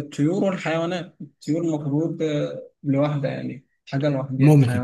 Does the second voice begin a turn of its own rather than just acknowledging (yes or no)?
yes